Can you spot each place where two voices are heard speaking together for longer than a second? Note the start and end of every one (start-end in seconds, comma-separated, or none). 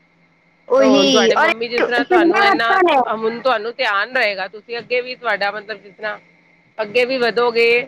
0.8-2.8